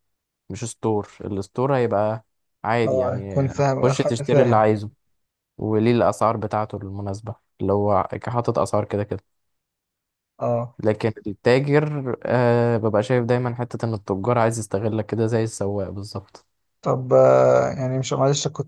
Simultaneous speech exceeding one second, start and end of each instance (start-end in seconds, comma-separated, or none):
2.8-4.6